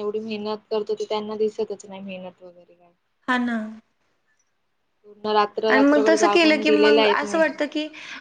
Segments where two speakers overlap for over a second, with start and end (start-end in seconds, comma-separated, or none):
5.7-7.4